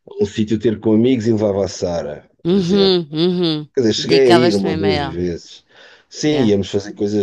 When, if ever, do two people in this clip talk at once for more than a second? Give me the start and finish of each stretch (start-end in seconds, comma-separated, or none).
3.7-5.2